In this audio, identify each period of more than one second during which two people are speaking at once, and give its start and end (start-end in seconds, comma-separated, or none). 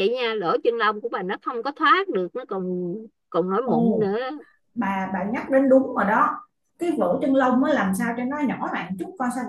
none